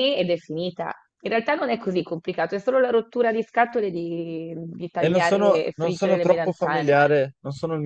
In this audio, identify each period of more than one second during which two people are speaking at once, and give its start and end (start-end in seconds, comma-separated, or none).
5.0-7.0